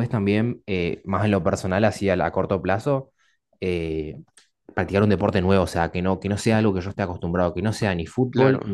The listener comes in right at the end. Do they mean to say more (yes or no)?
no